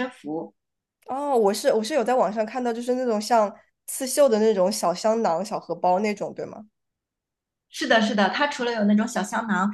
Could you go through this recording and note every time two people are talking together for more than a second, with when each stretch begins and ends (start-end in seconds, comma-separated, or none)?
none